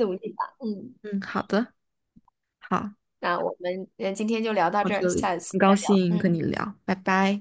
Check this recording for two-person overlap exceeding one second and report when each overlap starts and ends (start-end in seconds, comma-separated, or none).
4.8-6.3